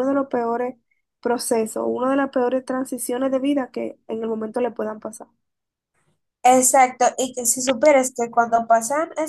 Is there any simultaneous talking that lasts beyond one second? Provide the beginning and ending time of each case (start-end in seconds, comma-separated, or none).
none